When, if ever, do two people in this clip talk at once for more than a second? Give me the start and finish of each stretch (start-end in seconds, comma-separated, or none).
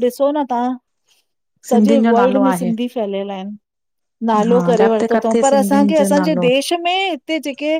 4.5-6.5